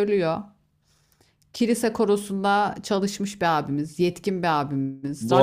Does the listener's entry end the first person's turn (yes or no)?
yes